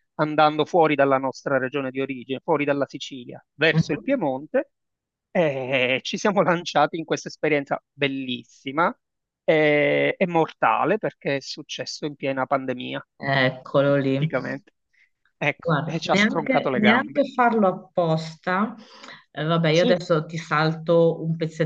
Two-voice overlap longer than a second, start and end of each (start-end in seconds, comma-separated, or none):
15.6-17.2